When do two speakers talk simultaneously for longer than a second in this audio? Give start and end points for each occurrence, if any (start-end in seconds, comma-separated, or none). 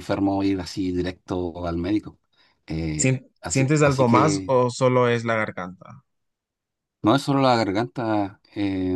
3.0-4.5